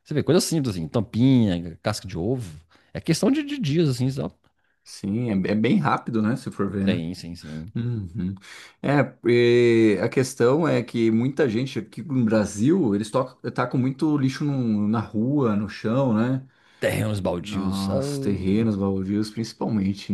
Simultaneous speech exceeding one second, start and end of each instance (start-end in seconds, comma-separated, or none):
17.4-18.7